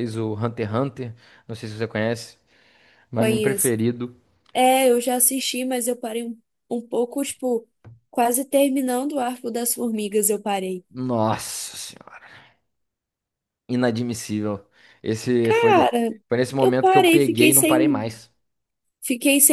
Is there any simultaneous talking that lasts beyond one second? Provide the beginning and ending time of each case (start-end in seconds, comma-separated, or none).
16.6-18.1